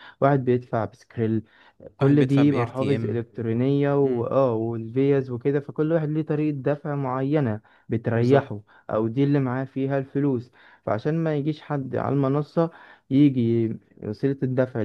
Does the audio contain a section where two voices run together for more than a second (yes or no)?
yes